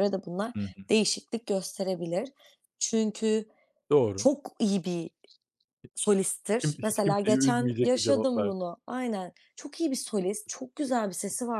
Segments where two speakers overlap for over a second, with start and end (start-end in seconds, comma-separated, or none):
6.6-8.7